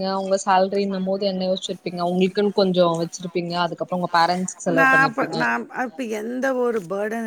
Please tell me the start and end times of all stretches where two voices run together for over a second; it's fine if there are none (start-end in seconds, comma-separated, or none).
none